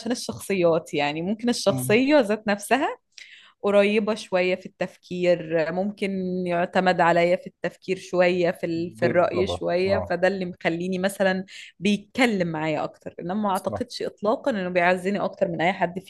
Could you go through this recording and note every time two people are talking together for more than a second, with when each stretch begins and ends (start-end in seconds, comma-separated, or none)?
8.7-10.2